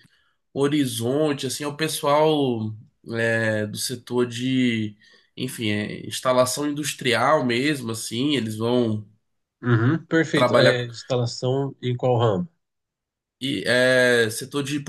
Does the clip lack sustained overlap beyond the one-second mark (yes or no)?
yes